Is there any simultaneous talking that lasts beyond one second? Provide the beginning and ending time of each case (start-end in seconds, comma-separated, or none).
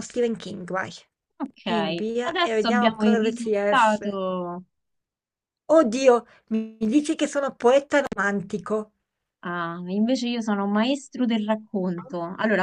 1.6-4.2